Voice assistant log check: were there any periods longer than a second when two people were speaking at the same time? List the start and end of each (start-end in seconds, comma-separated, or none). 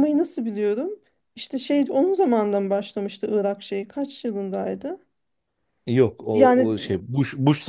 none